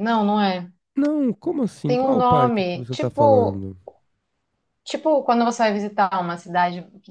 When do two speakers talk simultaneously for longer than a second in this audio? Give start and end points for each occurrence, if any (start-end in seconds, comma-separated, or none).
1.8-3.6